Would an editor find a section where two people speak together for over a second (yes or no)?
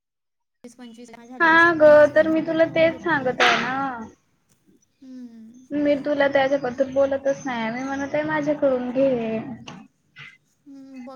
yes